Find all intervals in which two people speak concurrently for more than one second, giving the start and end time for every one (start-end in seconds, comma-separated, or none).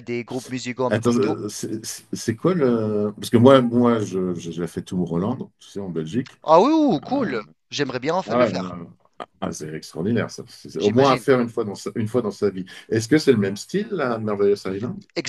none